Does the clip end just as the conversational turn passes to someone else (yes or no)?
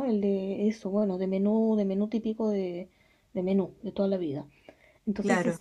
no